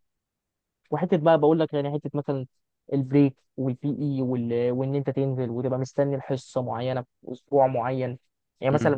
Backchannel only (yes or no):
yes